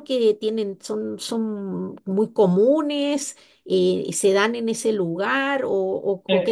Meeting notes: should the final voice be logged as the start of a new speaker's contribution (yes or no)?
yes